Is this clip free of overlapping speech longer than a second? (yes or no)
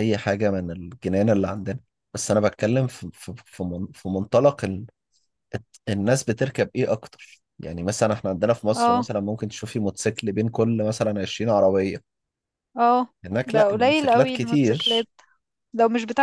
no